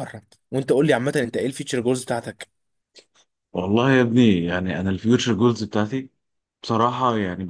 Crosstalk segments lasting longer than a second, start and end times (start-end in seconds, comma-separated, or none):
none